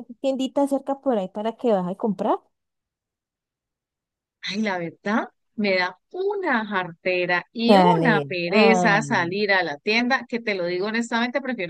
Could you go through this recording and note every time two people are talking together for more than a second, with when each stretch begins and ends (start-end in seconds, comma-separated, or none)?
7.7-9.4